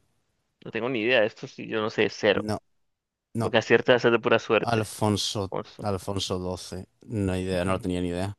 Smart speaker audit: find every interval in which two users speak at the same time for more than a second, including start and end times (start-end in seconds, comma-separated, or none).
none